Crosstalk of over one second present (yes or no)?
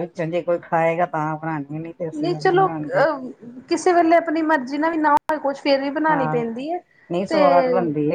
no